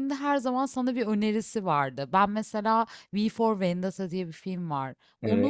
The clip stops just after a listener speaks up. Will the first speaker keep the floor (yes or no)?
yes